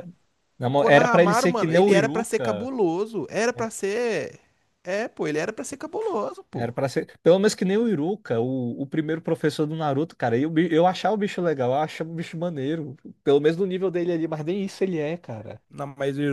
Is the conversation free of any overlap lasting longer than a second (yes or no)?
no